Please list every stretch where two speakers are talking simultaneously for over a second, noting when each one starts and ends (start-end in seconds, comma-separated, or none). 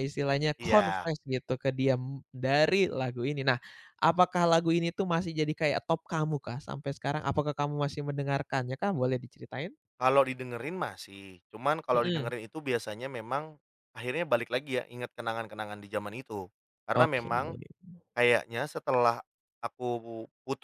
none